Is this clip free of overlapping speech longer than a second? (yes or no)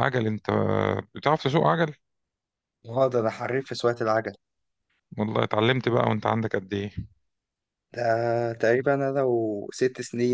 yes